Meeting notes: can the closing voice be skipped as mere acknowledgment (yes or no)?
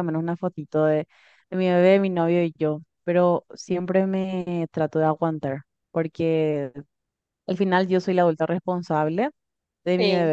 yes